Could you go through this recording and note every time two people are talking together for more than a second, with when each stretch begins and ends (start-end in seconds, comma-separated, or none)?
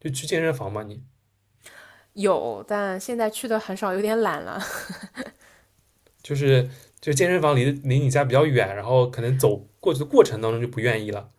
none